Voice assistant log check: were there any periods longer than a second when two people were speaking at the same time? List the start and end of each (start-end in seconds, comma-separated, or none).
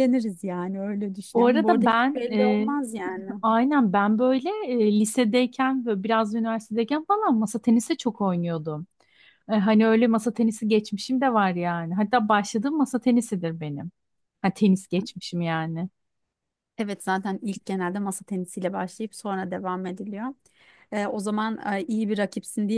1.3-2.7